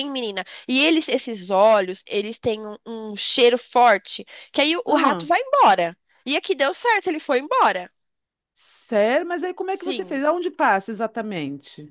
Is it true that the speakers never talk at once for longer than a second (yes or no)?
yes